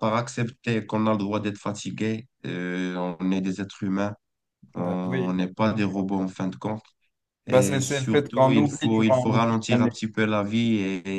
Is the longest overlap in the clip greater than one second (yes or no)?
yes